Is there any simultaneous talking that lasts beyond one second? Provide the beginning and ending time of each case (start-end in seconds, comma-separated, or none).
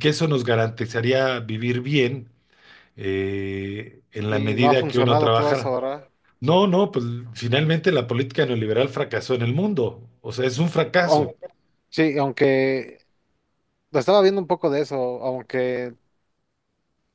4.3-5.8